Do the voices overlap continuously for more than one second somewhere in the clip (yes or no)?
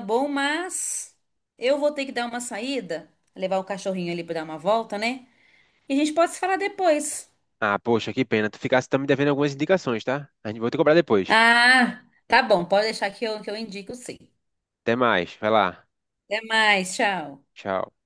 no